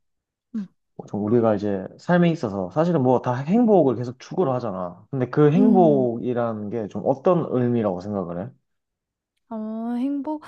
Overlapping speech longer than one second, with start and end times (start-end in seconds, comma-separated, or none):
none